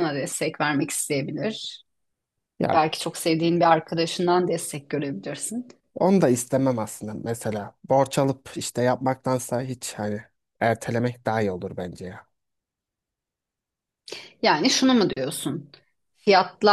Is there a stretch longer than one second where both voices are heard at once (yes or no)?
no